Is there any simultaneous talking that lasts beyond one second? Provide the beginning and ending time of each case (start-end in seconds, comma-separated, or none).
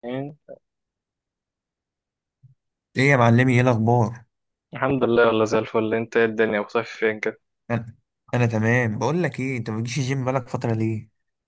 none